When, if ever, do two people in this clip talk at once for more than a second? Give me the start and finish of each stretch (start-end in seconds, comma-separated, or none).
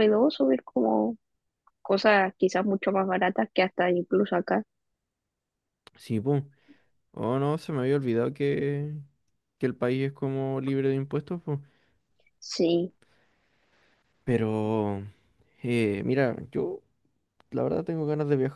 none